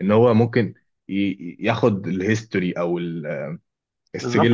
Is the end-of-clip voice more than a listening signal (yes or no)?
yes